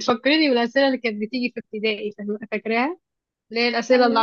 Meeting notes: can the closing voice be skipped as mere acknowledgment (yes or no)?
yes